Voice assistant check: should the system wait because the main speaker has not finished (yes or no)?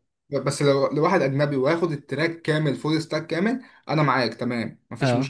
yes